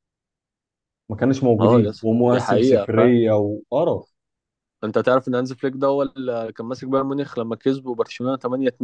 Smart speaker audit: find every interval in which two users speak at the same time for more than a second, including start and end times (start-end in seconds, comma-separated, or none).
1.6-3.1